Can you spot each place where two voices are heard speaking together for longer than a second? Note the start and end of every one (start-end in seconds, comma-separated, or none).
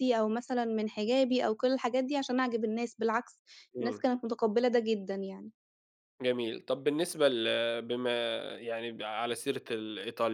none